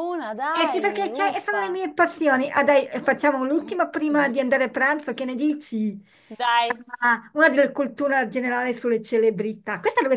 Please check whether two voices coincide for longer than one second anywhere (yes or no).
yes